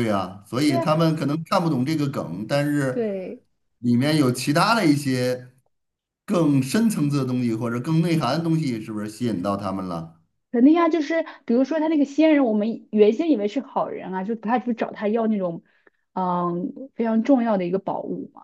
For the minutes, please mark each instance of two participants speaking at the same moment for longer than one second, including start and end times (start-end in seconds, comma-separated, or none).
none